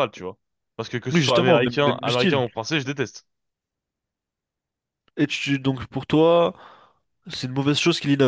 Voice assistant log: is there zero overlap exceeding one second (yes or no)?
no